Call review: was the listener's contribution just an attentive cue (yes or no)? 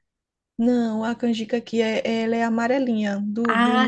no